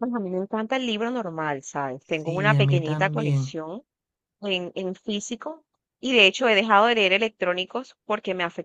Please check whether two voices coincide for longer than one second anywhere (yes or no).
yes